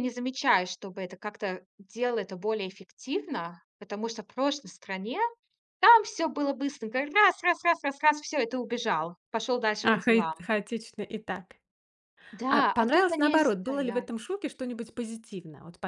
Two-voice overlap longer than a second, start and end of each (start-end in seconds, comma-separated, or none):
12.5-14.1